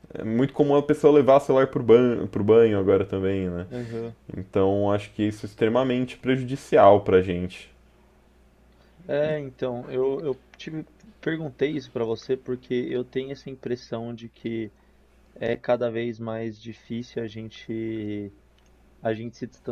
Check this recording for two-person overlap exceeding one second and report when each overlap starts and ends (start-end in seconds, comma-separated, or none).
none